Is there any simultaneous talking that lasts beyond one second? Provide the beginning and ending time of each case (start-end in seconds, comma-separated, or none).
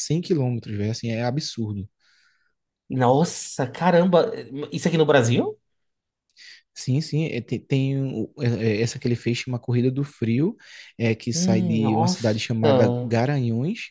11.3-13.1